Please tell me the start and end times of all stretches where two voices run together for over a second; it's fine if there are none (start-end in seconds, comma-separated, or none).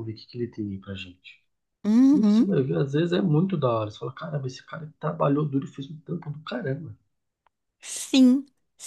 none